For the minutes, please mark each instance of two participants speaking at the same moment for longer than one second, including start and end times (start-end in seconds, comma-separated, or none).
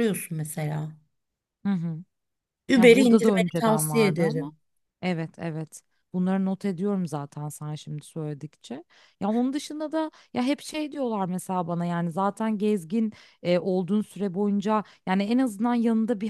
2.7-4.5